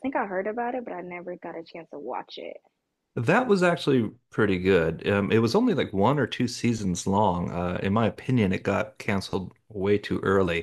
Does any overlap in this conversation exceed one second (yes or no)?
no